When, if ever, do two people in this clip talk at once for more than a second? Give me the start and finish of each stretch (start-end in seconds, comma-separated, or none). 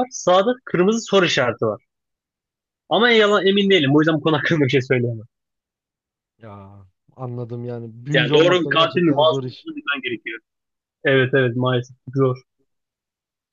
8.1-9.7